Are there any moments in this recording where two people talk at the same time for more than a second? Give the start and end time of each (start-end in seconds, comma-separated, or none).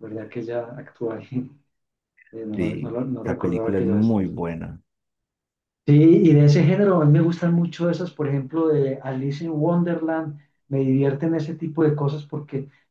2.6-4.3